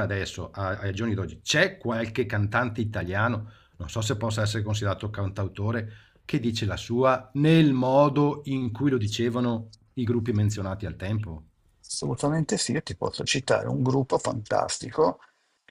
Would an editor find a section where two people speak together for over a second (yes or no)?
no